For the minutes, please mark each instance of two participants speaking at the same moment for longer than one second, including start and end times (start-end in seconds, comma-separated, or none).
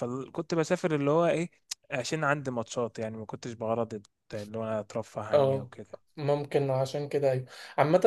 none